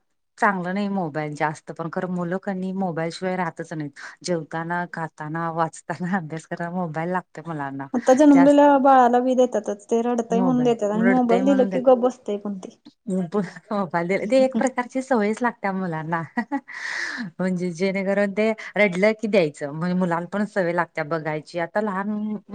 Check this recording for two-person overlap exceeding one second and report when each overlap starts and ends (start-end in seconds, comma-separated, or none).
10.4-11.9